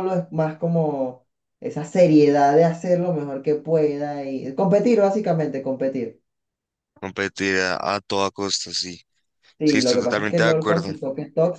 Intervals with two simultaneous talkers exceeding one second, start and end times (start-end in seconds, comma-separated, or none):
9.6-10.9